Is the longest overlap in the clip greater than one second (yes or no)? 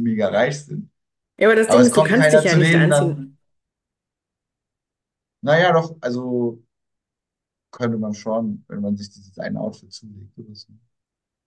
yes